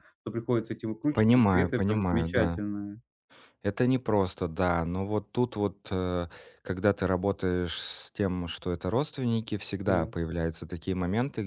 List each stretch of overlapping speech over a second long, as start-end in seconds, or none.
1.1-2.6